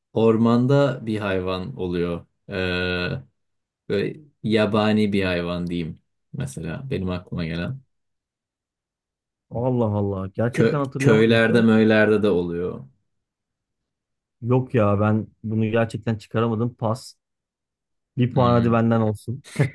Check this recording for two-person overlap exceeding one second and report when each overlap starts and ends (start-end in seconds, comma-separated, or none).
10.5-11.8